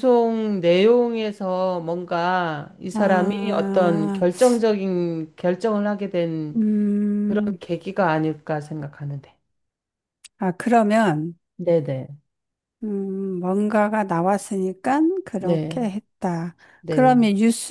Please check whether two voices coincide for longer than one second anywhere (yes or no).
yes